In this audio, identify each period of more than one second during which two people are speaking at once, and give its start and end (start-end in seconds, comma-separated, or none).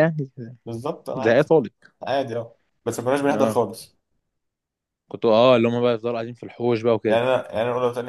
none